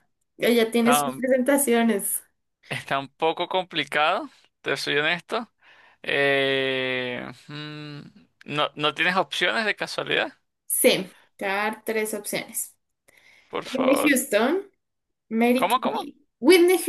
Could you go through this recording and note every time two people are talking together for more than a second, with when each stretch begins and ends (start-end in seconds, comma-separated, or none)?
none